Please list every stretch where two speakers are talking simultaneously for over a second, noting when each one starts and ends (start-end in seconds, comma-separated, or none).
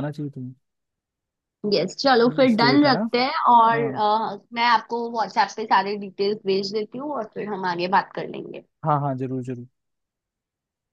none